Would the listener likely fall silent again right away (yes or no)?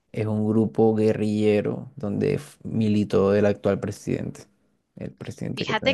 no